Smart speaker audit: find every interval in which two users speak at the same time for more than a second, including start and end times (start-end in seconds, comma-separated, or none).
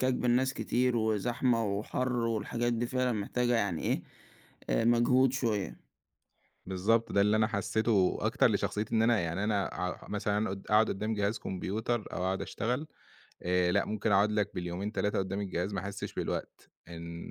none